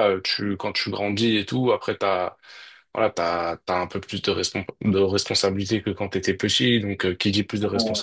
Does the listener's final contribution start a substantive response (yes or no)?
no